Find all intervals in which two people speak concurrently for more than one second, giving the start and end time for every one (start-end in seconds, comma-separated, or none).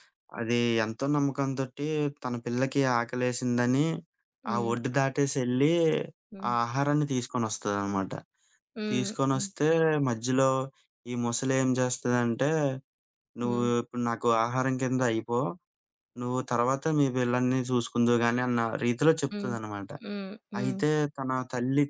none